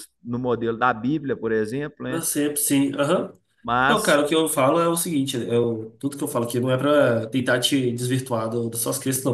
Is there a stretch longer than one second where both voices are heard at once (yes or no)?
no